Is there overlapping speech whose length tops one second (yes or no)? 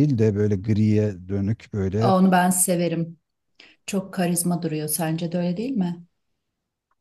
no